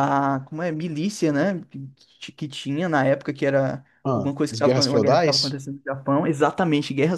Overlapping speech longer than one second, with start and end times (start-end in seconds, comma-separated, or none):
4.0-5.5